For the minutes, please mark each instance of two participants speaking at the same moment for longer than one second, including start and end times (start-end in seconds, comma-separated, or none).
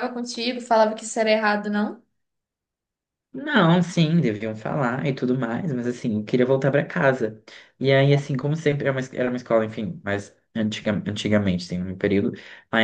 none